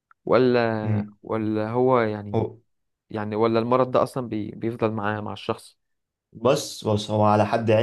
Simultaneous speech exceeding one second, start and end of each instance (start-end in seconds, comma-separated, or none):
none